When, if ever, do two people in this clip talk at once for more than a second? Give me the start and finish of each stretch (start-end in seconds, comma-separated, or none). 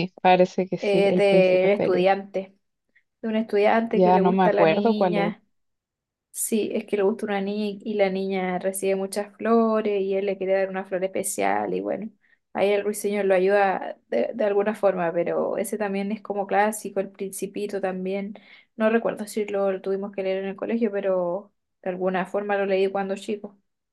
0.8-2.1, 3.9-5.3